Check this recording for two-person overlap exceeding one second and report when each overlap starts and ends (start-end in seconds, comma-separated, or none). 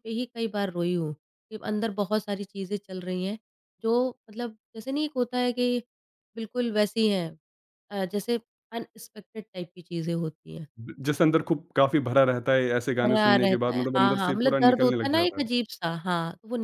13.0-15.5